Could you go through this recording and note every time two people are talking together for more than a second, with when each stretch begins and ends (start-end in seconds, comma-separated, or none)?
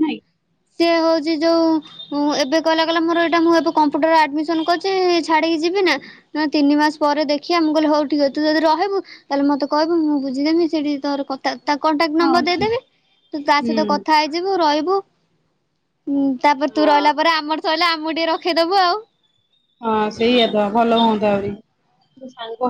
none